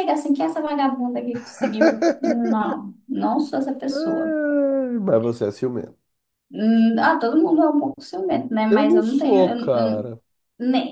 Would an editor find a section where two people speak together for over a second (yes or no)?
yes